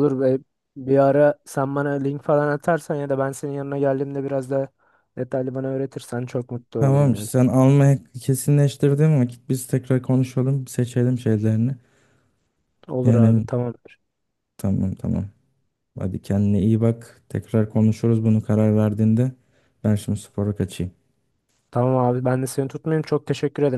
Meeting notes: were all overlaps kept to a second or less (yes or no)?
yes